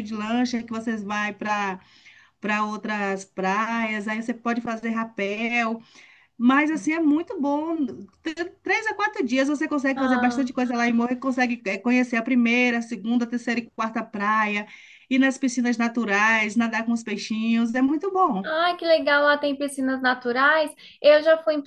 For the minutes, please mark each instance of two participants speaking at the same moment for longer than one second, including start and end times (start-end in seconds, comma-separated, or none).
none